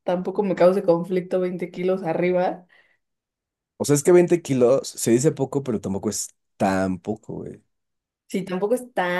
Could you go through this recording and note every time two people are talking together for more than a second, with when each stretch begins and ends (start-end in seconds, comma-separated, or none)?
none